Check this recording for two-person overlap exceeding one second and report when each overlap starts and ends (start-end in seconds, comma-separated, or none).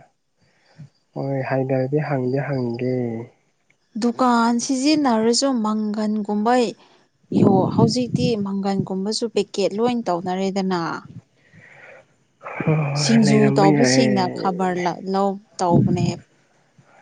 13.0-14.5